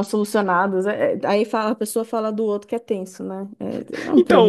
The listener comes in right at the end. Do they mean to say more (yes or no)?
yes